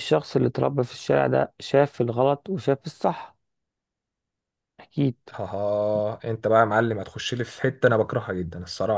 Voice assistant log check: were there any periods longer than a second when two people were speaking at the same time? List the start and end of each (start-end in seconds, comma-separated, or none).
none